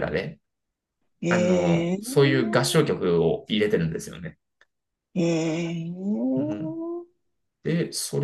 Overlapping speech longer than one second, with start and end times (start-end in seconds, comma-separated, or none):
1.3-2.6